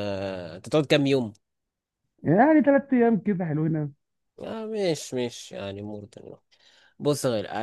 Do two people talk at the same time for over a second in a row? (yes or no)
no